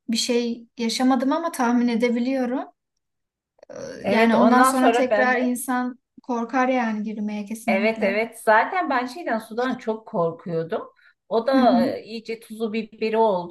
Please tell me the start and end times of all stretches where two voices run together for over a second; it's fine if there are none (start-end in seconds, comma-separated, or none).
4.0-5.6